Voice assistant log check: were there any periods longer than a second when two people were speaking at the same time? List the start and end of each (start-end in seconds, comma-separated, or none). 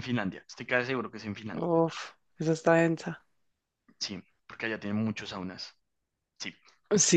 none